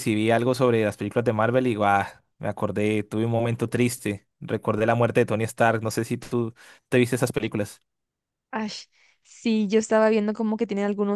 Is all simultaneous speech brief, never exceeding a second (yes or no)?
yes